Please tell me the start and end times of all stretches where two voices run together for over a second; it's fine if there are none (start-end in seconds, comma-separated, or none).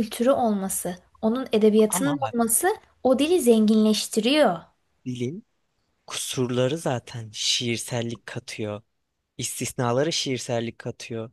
none